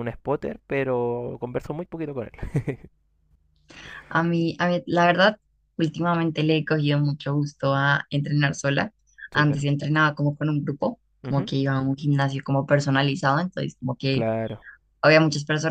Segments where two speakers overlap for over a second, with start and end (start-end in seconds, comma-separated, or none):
none